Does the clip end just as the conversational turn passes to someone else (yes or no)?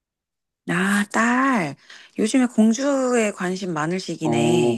yes